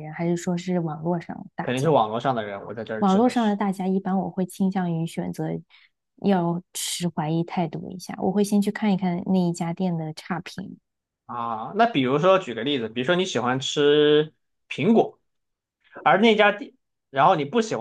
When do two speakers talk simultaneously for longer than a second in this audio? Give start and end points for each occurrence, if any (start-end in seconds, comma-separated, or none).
none